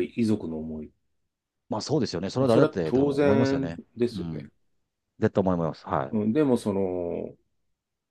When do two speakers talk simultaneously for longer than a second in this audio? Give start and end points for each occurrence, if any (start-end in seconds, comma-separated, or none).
2.4-4.5